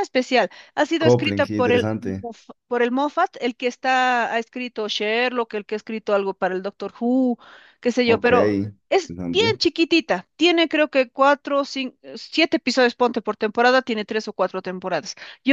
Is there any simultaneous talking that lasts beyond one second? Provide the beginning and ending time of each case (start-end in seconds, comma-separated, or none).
1.0-2.3